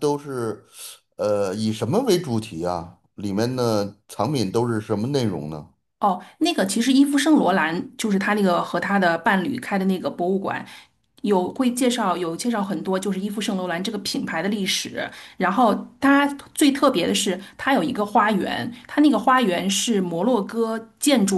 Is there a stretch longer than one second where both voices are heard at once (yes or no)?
no